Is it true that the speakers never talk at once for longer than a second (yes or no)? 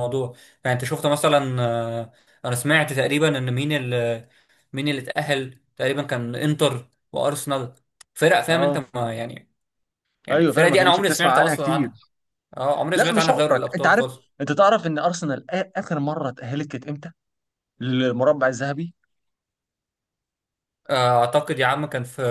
no